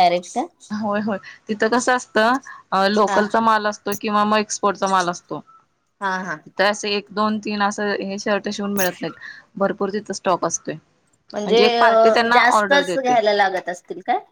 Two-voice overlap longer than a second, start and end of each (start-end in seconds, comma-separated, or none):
11.7-13.1